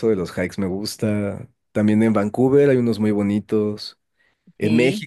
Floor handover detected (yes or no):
no